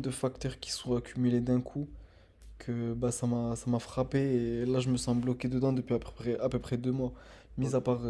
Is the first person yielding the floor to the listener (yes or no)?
no